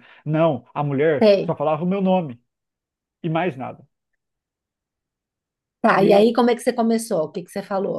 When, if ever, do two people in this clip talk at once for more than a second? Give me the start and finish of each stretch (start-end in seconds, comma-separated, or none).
none